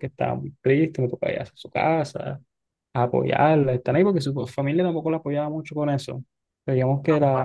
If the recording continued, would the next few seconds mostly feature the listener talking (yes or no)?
no